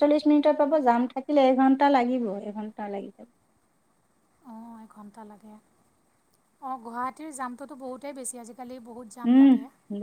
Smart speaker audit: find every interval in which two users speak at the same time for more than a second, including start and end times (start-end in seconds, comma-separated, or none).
none